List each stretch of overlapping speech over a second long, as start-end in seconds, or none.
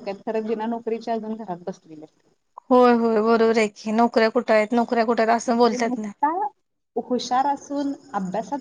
none